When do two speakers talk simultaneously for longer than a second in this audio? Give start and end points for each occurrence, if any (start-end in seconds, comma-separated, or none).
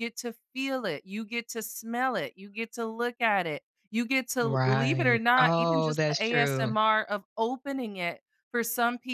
4.4-6.7